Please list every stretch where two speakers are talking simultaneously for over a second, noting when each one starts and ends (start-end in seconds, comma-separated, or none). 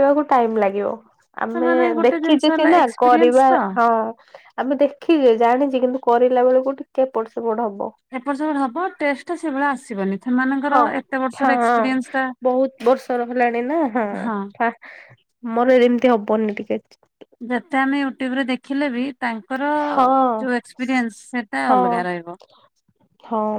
1.5-3.6